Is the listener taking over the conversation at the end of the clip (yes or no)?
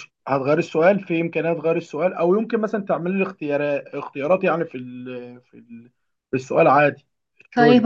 yes